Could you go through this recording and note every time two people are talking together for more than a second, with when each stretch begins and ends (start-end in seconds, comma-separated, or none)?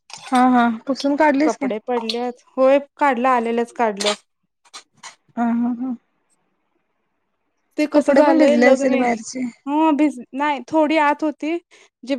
7.9-9.4